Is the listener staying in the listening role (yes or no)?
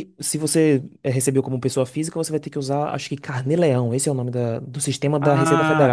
no